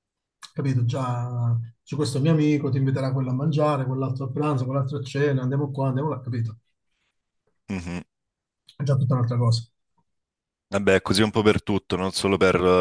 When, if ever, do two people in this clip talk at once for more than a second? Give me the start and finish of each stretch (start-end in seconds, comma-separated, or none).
none